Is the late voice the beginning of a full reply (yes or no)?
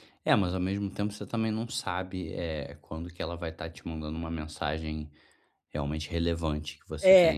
yes